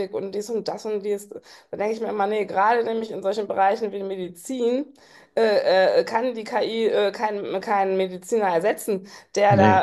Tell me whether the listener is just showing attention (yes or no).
yes